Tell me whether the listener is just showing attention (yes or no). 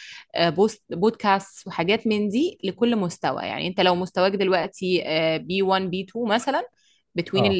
yes